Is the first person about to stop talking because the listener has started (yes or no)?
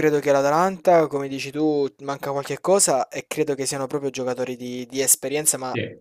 no